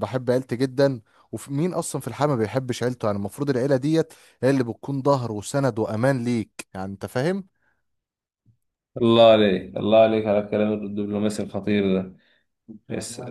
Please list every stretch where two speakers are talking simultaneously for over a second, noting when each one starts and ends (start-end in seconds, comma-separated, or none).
none